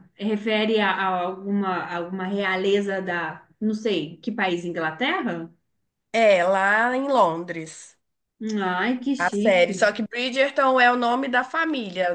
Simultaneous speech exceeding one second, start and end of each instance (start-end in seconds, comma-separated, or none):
none